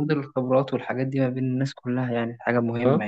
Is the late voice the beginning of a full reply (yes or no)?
yes